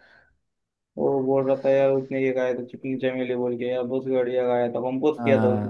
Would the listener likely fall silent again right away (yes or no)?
no